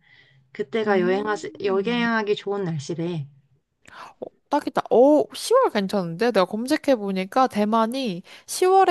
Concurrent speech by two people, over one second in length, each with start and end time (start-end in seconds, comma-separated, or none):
0.9-2.1